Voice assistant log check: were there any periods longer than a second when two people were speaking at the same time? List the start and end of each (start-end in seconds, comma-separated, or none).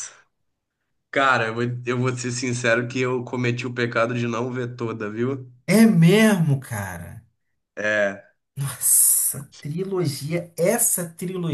none